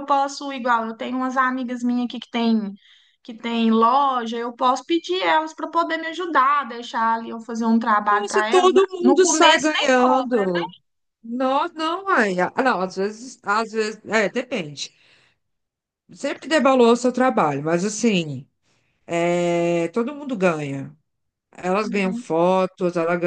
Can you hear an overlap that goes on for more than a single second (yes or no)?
yes